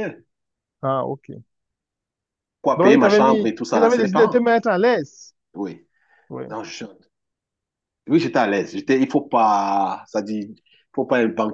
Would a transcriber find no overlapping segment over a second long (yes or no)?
no